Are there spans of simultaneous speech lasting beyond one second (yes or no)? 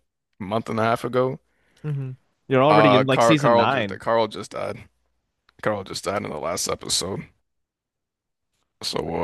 yes